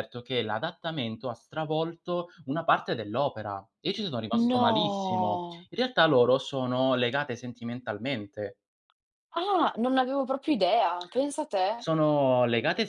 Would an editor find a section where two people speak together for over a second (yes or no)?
yes